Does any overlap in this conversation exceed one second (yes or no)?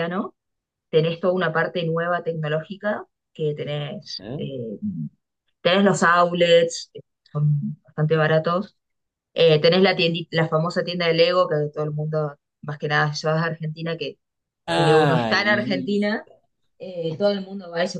yes